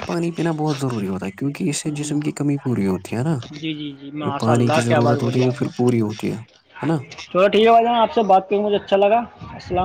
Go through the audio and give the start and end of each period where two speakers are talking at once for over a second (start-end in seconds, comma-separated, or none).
4.2-5.7